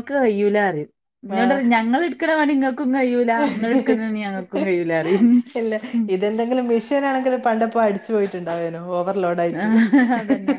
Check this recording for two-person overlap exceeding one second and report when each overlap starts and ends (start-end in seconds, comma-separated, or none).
none